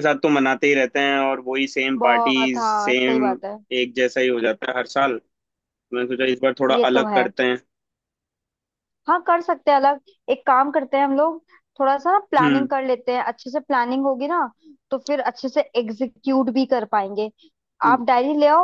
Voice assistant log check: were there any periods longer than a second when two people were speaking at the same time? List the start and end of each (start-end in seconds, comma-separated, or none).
2.0-3.2